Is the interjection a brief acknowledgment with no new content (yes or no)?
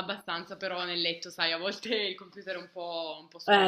no